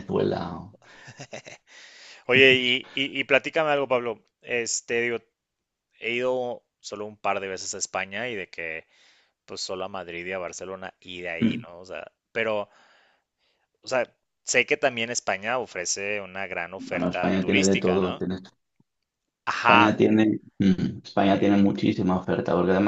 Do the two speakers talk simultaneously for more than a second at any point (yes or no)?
yes